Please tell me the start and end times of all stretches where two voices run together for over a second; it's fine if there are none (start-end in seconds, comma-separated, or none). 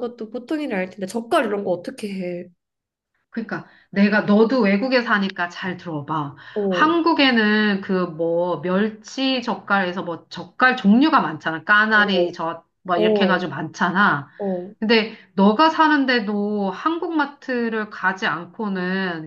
none